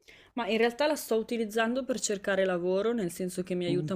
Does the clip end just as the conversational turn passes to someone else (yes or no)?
no